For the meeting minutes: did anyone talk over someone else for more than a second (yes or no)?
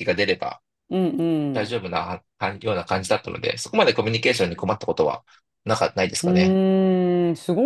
no